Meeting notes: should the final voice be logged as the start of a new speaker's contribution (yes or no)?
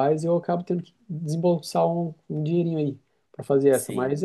no